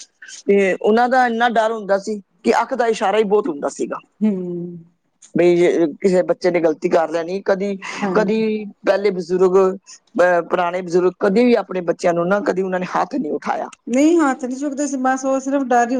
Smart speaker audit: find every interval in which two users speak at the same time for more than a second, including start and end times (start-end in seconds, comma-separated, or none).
none